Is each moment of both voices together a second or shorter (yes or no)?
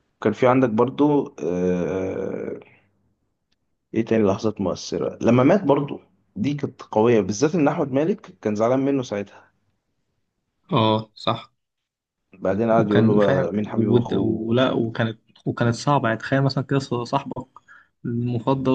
no